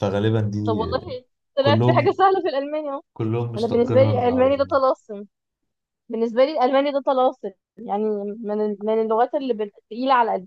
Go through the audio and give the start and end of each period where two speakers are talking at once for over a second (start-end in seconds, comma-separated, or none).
3.6-4.8